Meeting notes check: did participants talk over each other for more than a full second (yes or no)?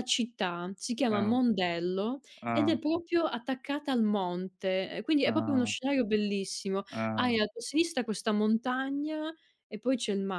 no